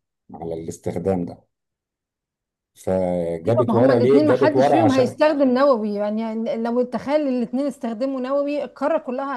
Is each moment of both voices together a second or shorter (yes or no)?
no